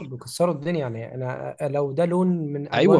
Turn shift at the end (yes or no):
yes